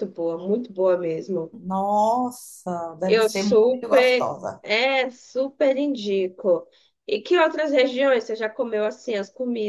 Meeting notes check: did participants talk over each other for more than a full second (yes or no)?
yes